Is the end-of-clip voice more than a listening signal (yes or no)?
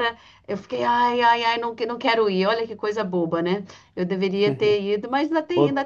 yes